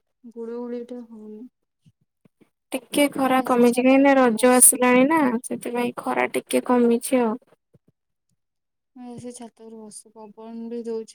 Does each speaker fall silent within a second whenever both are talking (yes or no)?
no